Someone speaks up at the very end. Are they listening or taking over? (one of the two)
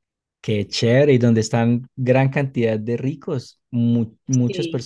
listening